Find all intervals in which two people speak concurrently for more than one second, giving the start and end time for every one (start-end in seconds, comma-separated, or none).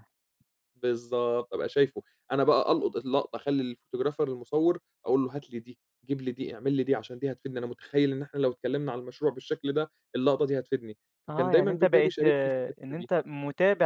11.3-13.1